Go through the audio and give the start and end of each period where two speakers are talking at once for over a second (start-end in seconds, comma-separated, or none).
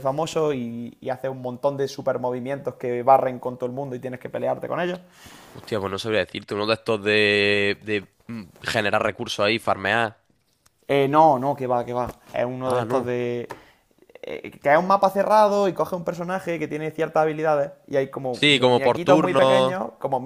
18.3-19.7